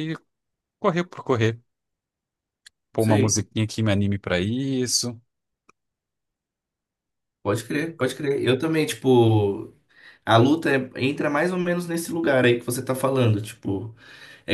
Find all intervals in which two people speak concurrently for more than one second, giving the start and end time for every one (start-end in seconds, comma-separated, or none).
none